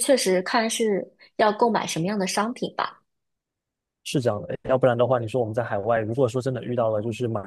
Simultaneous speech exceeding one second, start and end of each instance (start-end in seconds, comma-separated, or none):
none